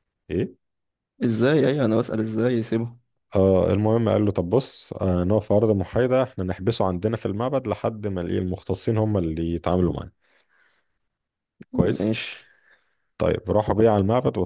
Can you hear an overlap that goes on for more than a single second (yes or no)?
no